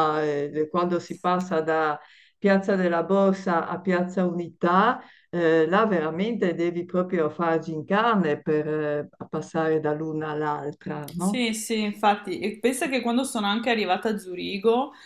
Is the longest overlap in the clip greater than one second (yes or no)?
no